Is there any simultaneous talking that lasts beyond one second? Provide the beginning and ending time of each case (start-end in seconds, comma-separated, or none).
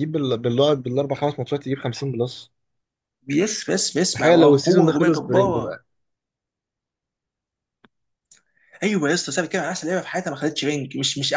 4.2-5.6